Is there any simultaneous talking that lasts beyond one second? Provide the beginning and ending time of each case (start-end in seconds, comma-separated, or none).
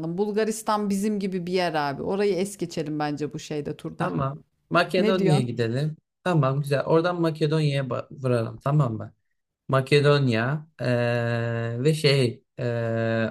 none